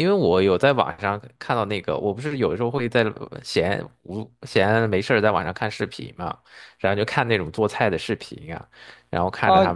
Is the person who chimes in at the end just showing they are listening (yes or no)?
no